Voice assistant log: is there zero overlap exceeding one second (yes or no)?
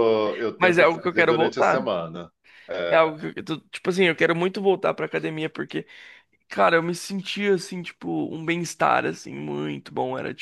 no